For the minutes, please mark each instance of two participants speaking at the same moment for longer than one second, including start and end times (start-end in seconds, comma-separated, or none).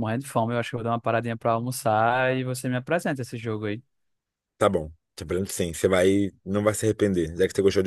none